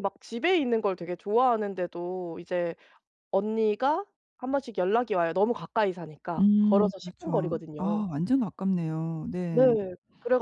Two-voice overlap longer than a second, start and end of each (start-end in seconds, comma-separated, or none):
6.4-8.1